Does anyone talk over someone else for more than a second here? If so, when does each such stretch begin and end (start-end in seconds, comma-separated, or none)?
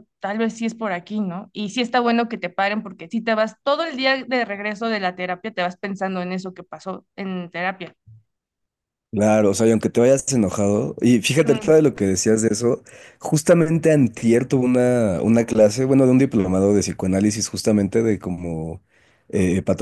none